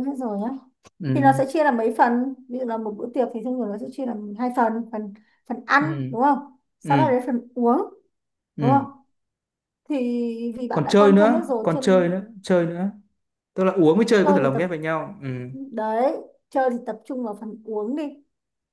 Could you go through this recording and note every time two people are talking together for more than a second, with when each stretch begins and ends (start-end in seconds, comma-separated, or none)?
10.7-12.2